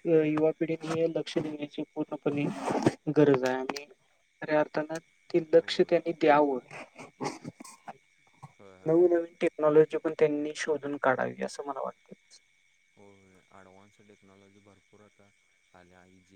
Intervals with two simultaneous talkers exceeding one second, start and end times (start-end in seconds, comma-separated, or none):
none